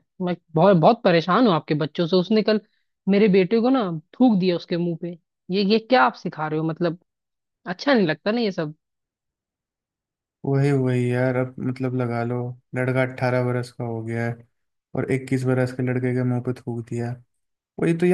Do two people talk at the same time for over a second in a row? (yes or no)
no